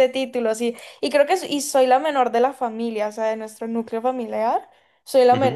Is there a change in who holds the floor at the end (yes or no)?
no